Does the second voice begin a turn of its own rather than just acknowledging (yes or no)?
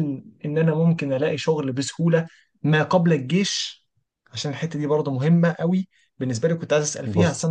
no